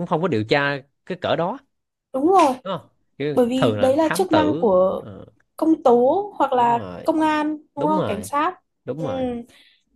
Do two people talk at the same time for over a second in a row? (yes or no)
yes